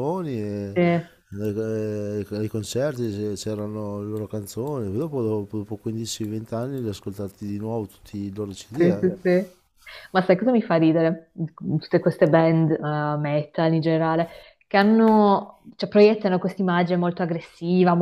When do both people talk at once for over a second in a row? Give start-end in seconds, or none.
none